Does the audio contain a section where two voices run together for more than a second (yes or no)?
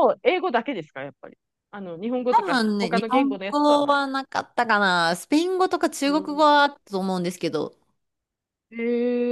yes